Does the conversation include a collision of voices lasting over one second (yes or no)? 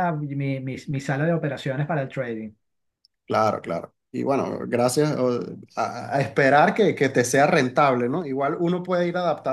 no